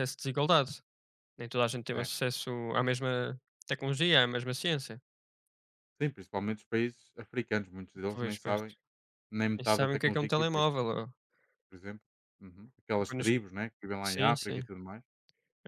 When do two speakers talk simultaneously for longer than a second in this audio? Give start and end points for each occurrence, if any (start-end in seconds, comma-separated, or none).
9.6-10.8